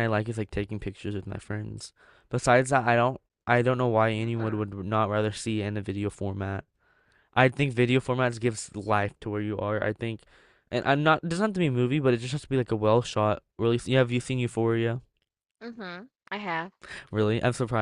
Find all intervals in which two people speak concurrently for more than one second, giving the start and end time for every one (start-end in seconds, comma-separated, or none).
none